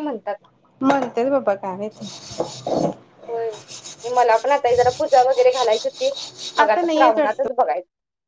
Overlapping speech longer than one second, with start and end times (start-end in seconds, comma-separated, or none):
none